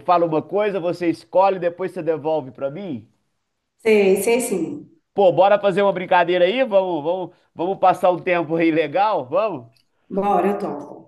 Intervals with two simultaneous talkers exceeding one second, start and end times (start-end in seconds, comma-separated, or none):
none